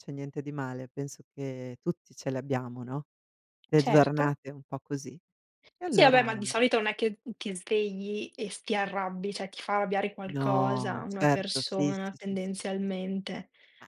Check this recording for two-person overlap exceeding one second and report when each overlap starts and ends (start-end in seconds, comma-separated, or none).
10.3-12.9